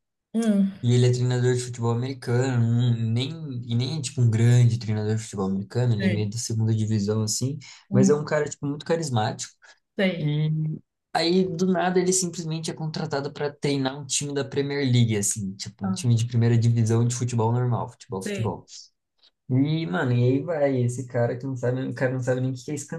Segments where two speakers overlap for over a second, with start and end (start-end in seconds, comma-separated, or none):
none